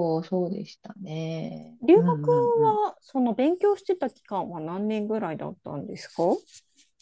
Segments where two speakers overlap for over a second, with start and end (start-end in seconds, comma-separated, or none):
none